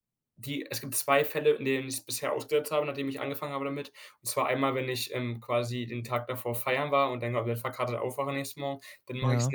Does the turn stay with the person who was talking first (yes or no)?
yes